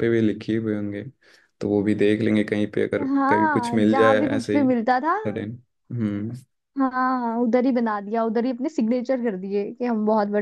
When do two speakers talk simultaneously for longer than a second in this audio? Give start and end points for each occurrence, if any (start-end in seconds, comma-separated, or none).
3.1-5.2